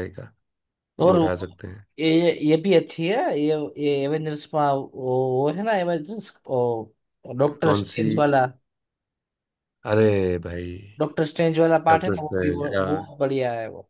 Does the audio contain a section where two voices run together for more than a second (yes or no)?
yes